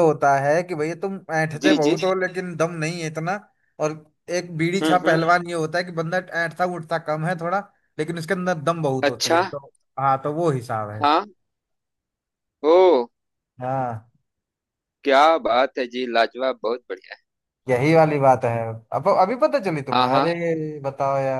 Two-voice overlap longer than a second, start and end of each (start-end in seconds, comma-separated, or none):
none